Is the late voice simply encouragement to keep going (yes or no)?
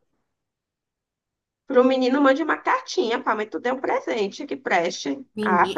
no